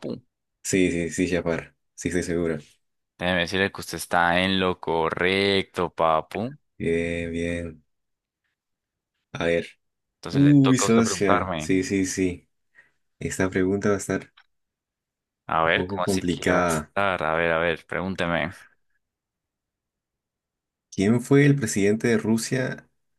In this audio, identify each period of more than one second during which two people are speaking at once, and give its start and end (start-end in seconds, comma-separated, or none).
10.3-11.7, 15.7-16.9